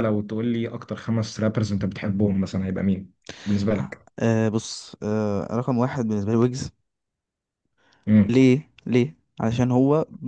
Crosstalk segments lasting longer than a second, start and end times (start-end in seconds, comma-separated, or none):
none